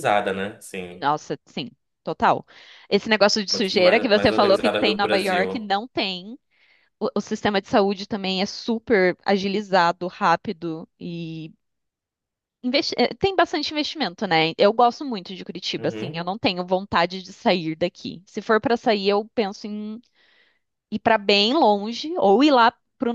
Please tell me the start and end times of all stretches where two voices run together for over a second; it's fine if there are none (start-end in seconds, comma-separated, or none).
3.5-5.7